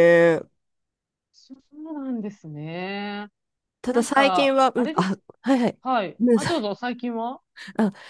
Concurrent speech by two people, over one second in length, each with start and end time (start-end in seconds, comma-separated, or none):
3.9-5.2